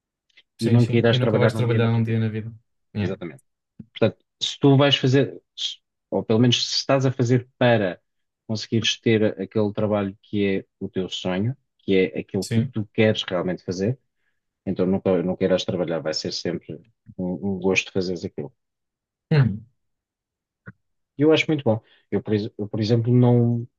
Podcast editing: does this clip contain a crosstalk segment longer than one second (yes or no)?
yes